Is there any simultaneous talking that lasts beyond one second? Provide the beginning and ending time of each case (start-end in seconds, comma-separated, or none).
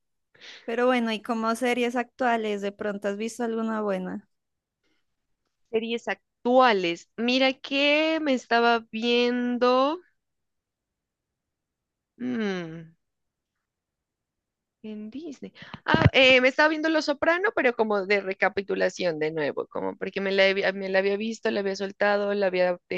none